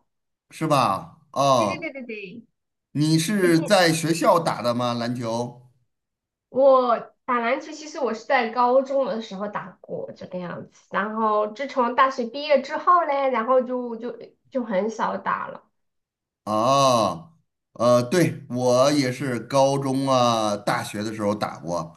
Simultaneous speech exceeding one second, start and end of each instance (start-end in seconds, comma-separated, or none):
none